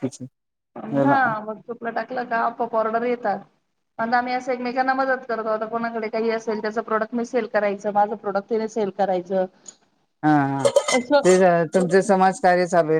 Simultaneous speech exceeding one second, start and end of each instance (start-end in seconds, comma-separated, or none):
none